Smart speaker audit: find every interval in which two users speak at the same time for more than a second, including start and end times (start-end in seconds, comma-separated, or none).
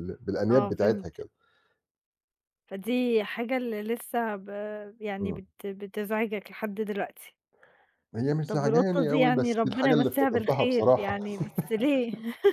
8.5-11.2